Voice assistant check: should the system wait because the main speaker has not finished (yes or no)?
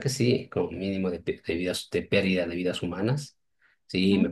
yes